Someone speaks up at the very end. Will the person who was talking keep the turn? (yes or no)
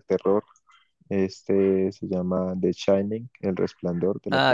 no